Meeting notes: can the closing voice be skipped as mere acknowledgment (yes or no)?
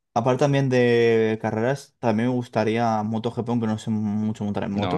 no